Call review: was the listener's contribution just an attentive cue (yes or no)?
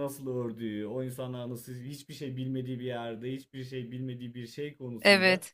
yes